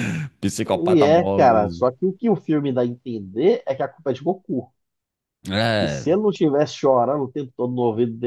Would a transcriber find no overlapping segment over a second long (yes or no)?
no